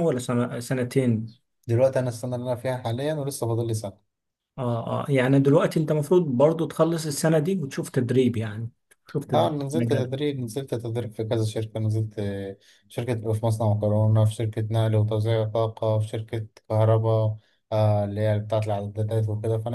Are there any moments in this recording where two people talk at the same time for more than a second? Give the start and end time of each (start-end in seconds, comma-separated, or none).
none